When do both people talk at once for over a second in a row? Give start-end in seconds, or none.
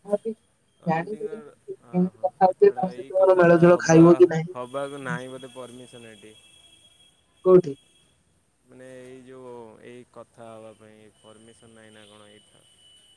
0.9-4.0